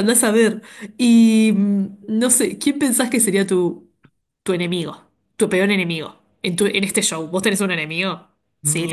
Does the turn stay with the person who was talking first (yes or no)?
no